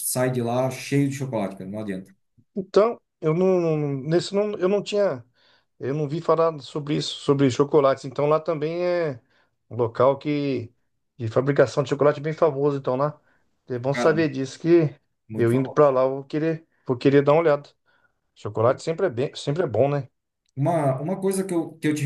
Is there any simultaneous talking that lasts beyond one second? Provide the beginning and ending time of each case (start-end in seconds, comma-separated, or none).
none